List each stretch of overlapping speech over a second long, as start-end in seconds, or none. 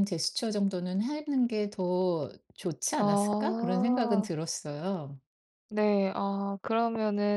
3.0-4.3